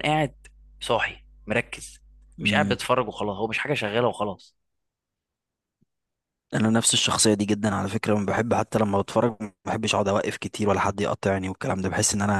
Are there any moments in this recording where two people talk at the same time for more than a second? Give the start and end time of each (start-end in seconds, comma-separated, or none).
none